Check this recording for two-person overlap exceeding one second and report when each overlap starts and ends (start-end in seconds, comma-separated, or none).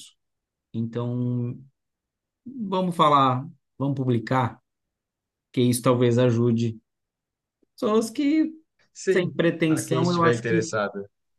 9.1-10.7